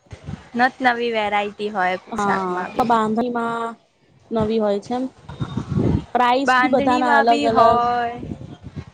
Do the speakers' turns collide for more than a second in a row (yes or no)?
yes